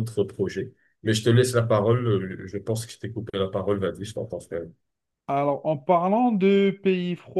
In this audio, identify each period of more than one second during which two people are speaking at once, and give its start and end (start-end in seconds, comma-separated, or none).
none